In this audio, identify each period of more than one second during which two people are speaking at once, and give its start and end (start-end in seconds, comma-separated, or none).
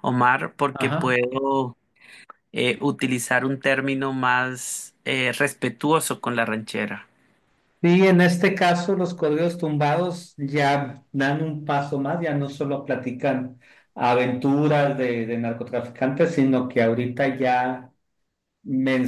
none